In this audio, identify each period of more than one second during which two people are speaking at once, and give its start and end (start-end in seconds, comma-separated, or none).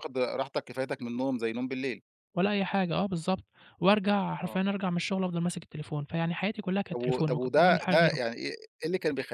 6.9-8.2